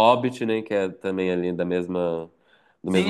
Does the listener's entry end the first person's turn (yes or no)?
yes